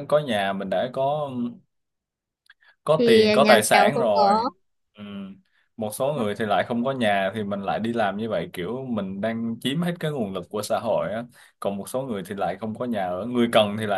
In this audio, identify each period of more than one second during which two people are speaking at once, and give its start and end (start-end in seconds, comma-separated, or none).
3.0-4.4